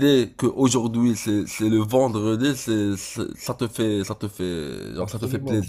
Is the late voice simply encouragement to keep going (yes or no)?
no